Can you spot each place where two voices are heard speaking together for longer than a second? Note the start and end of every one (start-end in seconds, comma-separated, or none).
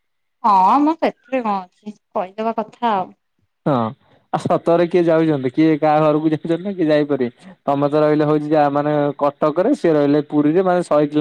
none